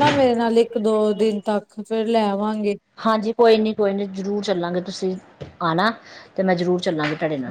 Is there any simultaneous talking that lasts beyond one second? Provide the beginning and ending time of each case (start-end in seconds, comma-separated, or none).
none